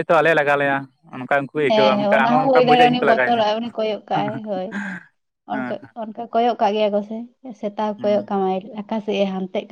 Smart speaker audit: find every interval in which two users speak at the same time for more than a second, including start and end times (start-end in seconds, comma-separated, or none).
1.7-3.4